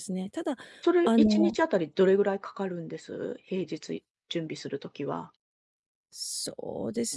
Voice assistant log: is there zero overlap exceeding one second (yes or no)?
yes